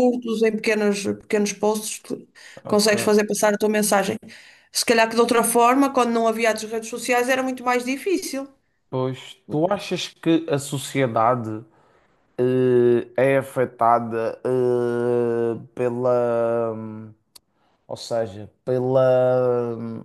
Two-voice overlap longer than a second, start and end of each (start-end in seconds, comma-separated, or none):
none